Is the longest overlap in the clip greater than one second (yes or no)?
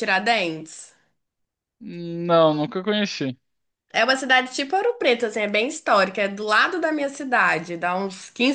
no